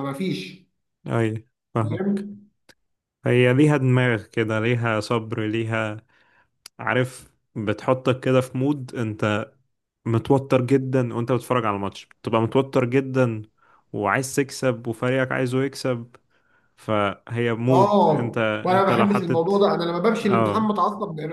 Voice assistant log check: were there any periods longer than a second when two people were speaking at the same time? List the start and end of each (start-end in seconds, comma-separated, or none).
17.7-19.5